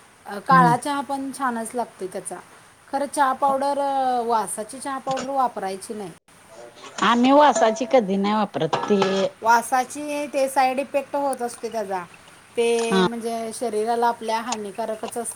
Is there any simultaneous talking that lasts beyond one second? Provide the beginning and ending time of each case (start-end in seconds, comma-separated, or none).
none